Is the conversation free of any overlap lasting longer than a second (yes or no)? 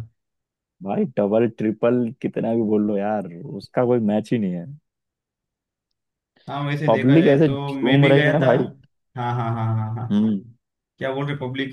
no